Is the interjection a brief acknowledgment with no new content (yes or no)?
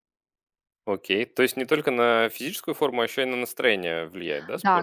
no